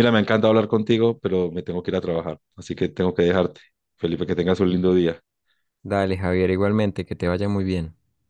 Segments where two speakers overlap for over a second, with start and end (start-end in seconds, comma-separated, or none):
none